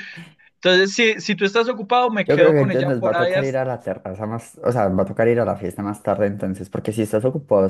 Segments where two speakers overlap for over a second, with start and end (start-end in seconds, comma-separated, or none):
2.2-3.6